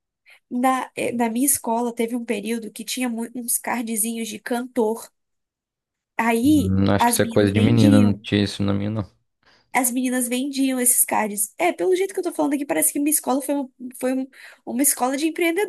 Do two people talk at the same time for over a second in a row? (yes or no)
yes